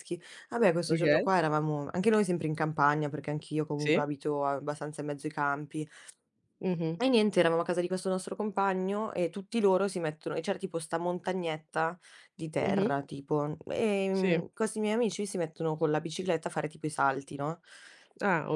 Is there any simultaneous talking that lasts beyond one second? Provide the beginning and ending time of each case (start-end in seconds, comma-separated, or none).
none